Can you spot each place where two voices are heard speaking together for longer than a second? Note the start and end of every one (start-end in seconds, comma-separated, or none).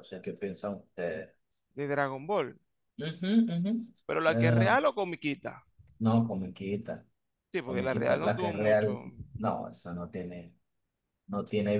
7.6-9.0